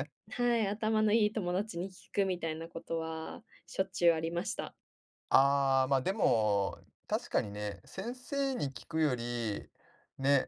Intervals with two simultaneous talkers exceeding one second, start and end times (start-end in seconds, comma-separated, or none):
none